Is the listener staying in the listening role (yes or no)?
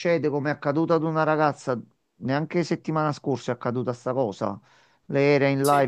yes